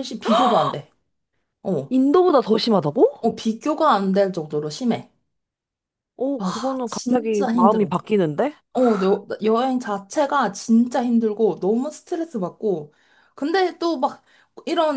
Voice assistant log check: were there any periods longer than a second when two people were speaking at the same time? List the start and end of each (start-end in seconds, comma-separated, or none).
6.4-7.9